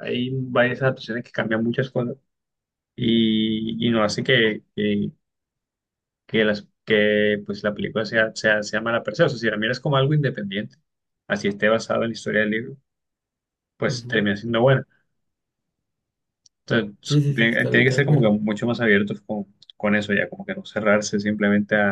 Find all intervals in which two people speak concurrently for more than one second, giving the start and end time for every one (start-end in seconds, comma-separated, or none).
17.1-18.3